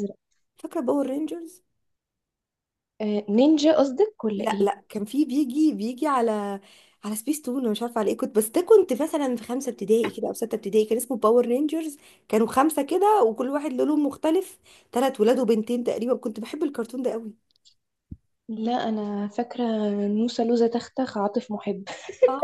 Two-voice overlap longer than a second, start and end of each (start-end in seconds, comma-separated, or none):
none